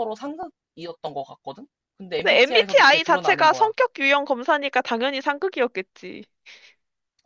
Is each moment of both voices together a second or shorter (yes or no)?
no